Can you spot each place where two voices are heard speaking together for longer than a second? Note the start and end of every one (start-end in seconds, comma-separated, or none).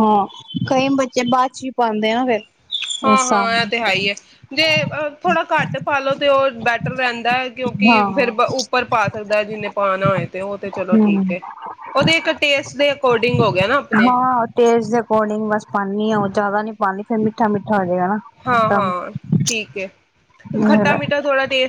none